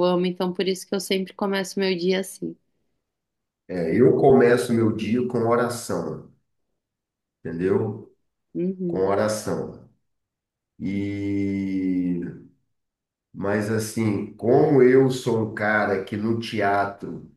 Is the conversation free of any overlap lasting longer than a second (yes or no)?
yes